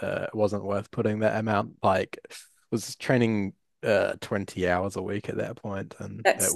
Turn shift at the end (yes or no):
yes